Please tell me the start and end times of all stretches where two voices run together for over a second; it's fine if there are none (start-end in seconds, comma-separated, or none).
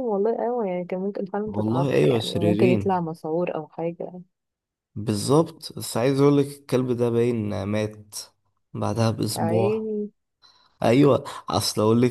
1.4-3.0